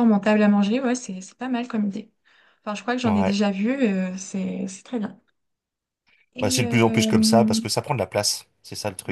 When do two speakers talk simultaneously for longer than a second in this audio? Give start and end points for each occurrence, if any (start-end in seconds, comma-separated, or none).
6.4-7.6